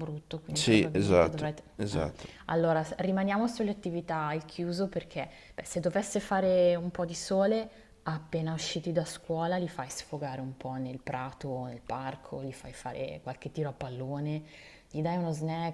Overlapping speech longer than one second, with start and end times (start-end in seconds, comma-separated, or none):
0.5-2.0